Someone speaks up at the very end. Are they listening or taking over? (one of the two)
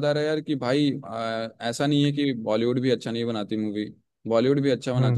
listening